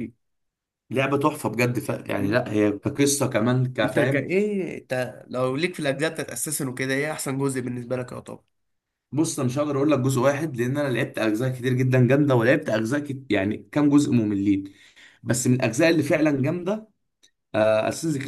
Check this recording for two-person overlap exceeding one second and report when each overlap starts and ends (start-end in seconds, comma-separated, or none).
none